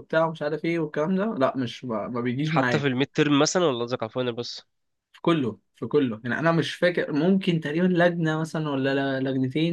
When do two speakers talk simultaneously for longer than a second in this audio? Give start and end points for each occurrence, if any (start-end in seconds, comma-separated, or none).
none